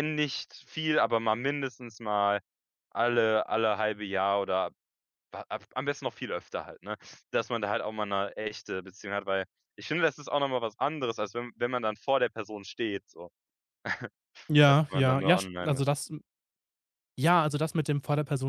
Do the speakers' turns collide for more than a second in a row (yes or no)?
yes